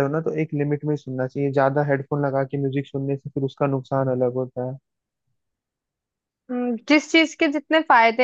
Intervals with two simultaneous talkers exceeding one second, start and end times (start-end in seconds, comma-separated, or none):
none